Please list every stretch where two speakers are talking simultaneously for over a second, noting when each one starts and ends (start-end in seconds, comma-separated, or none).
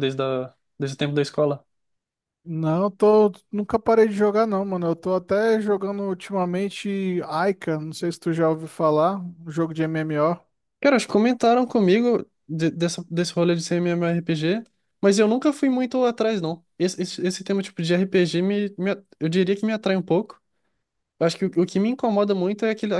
none